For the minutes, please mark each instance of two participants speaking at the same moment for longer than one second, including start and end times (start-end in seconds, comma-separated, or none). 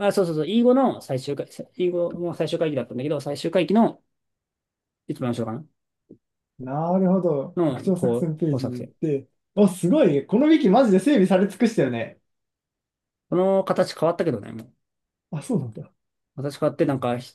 7.5-8.9